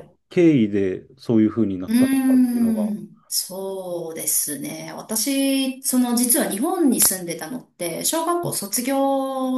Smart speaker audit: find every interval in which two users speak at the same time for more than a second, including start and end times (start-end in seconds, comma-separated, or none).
none